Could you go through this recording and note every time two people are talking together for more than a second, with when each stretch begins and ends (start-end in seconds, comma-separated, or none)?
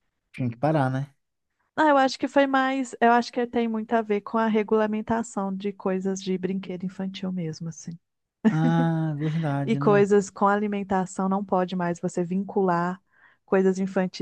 none